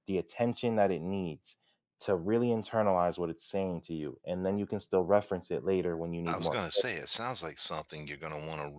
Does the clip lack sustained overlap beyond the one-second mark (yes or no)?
yes